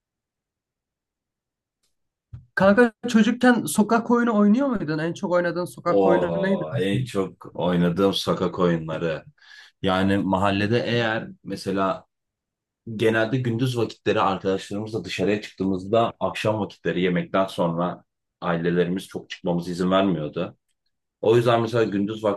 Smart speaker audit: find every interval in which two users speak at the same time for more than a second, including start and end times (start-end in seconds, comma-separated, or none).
5.9-7.1